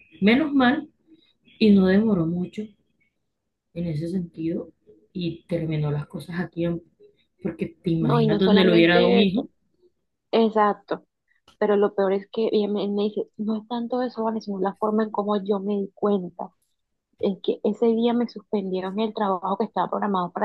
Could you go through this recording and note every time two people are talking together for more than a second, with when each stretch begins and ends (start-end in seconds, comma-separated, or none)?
8.0-9.5